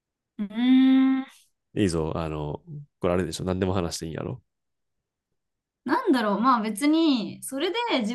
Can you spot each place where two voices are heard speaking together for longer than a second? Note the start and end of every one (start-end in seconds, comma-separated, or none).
none